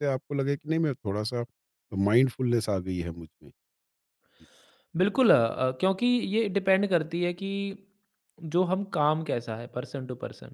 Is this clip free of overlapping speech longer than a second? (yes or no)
yes